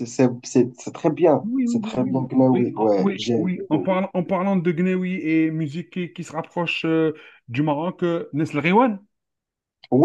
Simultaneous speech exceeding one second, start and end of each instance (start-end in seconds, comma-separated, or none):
1.4-3.9